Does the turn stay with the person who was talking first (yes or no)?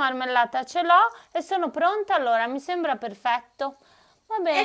no